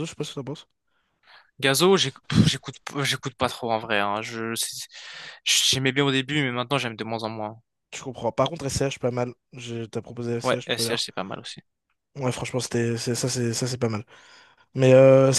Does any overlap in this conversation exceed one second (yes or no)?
no